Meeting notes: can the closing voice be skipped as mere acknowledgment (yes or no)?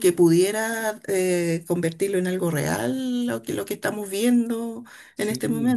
no